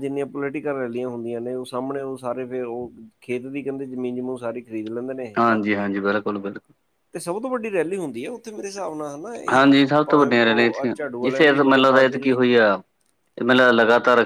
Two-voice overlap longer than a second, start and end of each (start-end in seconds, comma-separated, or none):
9.5-12.3